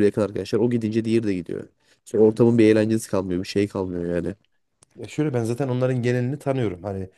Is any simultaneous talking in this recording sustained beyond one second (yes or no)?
no